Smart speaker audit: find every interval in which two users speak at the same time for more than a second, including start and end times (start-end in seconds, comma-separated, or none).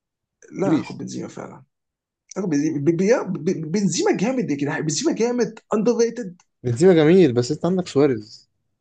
none